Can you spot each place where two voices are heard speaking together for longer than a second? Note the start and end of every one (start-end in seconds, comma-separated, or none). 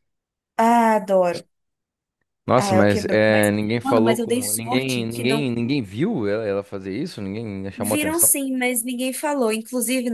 2.6-5.5